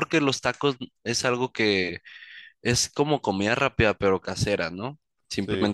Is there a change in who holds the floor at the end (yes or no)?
no